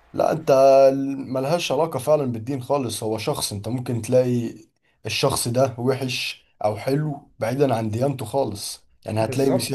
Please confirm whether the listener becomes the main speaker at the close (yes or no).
yes